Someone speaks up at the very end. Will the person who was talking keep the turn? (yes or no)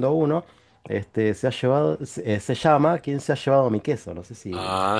no